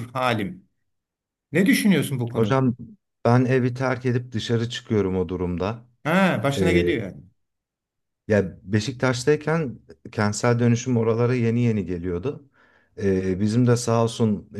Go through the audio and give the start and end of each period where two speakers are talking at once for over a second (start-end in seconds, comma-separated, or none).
none